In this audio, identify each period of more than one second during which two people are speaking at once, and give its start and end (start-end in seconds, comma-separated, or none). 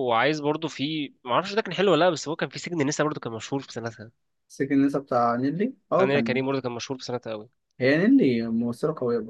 none